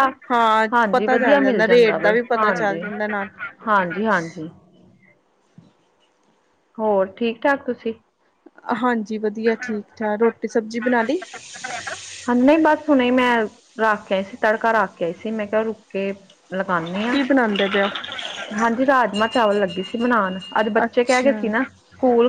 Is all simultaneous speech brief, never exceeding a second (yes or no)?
no